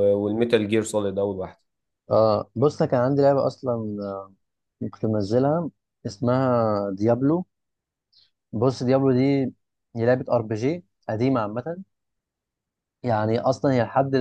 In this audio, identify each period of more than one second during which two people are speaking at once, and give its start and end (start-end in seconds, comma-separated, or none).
none